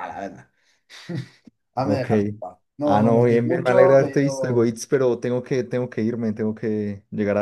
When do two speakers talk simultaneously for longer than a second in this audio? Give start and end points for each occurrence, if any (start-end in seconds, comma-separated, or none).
2.9-4.7